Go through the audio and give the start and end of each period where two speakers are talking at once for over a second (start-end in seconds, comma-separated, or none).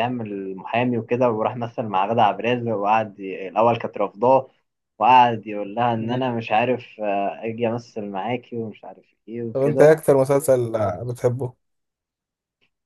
none